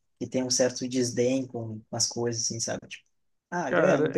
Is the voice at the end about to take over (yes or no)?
yes